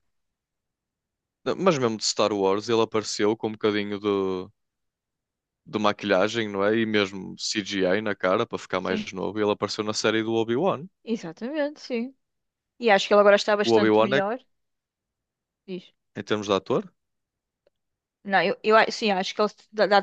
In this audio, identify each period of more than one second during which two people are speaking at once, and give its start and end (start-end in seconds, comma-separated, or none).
none